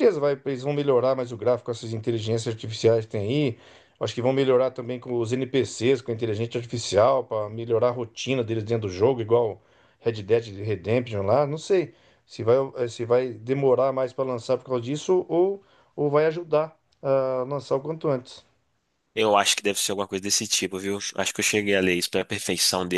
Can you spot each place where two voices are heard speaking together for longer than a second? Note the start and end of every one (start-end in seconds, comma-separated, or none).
none